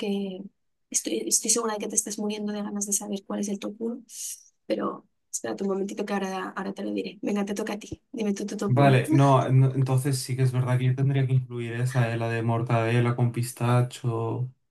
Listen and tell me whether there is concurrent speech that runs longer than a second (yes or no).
no